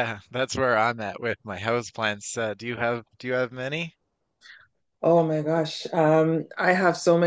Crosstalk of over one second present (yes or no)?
no